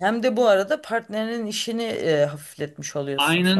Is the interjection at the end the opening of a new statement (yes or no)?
yes